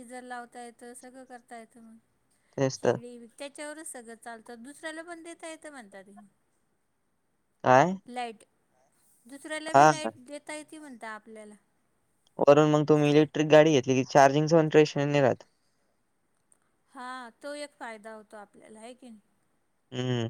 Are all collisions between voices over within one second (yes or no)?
yes